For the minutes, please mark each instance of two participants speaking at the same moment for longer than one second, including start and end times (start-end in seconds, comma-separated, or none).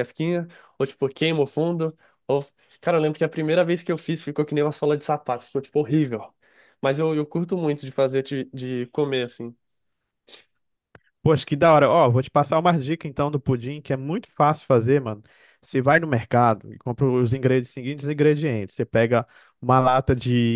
none